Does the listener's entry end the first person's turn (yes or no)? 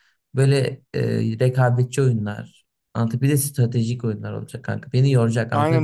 yes